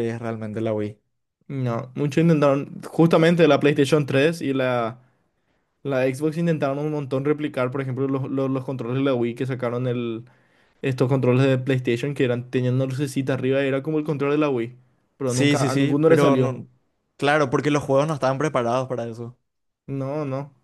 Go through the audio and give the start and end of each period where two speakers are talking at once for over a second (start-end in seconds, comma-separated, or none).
15.2-16.5